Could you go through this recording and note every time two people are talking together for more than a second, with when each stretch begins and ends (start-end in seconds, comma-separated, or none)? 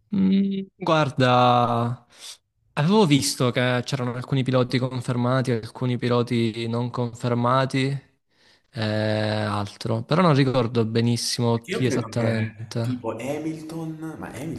11.5-13.1